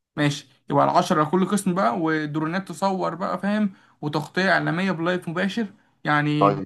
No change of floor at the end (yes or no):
no